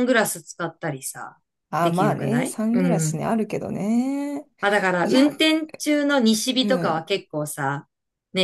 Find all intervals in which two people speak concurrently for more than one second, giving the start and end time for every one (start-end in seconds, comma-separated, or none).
1.8-3.2